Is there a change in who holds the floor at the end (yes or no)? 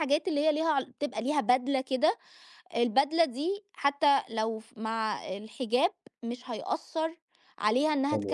no